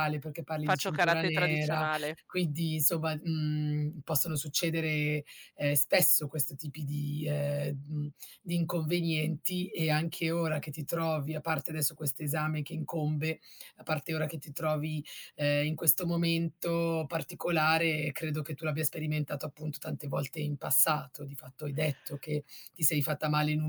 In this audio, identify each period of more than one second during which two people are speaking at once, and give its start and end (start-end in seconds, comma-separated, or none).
0.6-1.9